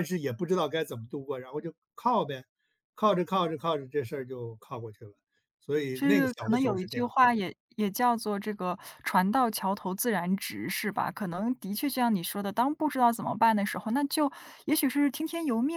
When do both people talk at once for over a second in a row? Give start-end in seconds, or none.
5.9-7.2